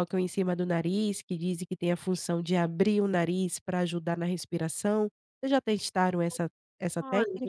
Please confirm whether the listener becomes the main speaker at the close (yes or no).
yes